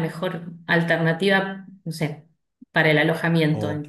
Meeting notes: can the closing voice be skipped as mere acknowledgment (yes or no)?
no